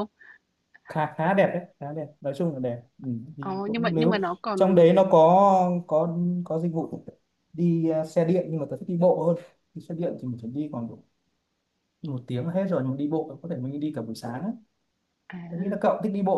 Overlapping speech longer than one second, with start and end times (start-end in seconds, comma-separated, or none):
3.4-4.9